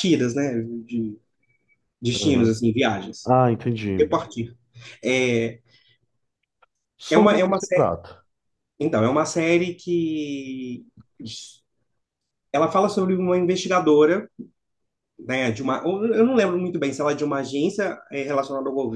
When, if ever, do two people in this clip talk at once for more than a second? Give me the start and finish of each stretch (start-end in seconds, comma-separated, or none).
none